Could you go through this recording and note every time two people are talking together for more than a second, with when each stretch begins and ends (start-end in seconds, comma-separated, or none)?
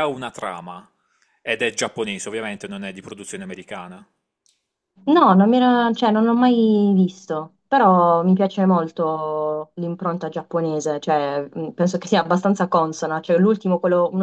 none